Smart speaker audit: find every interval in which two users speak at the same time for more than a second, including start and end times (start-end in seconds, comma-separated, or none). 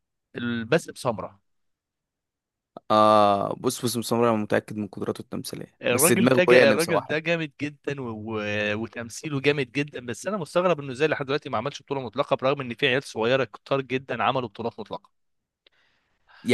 5.8-7.1